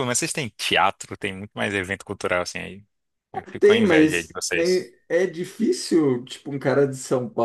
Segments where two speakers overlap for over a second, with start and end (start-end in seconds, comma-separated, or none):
3.6-4.9